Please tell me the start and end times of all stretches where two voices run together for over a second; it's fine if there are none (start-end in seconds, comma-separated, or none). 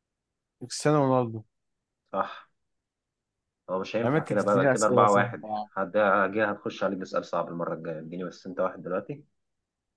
4.0-5.7